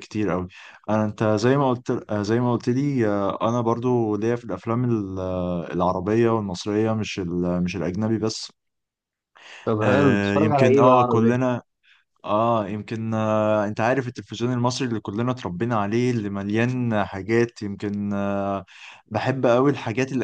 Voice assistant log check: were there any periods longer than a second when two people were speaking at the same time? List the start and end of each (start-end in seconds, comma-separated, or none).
9.8-11.4